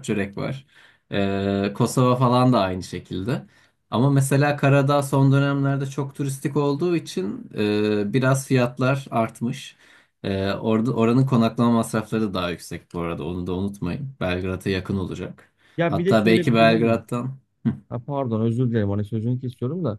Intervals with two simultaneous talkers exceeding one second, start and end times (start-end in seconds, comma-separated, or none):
15.8-17.0